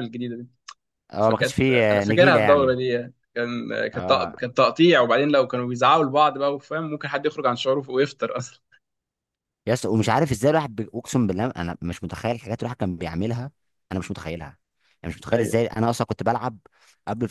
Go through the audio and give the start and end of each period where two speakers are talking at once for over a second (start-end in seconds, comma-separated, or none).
1.2-2.8